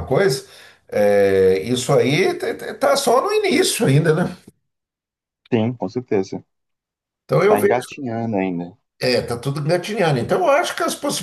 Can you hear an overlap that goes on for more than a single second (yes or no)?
no